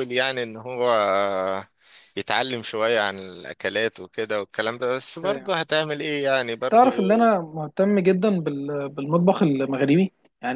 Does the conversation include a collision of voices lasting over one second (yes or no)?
no